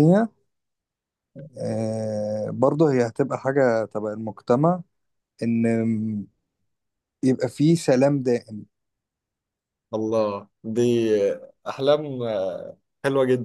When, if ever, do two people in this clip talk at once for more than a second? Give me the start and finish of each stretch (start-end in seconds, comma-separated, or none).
none